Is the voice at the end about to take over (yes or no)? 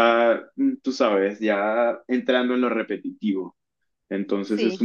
no